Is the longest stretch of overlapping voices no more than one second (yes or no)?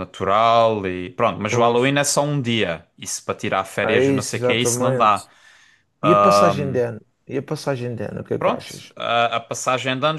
no